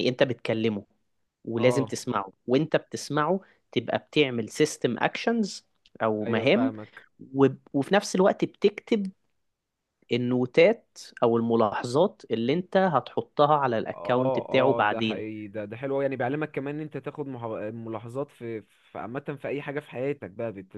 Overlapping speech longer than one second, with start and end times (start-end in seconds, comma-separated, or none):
13.9-15.2